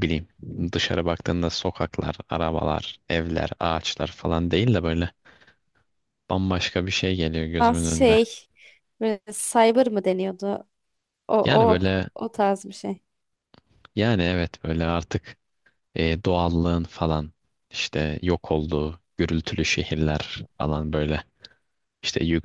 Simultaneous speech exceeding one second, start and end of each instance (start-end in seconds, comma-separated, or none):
none